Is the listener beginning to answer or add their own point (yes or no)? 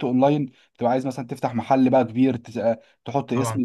yes